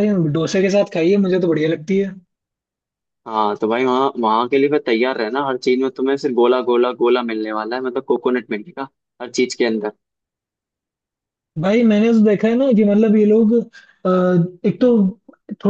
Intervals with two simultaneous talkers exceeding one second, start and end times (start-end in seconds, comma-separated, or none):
none